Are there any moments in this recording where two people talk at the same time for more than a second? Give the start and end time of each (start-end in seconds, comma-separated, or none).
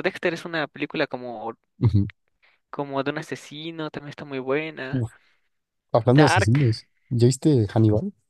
none